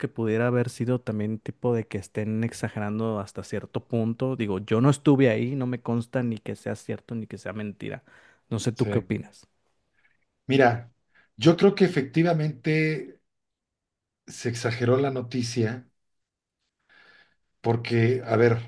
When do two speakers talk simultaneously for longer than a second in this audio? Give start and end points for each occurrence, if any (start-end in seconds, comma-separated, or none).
none